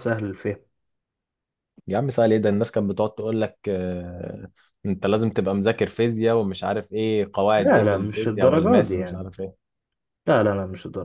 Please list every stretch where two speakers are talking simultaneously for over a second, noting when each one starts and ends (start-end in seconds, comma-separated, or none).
7.6-9.2